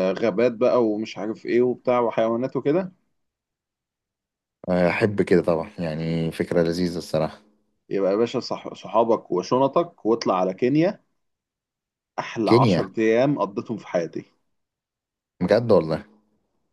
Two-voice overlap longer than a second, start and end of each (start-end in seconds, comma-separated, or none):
none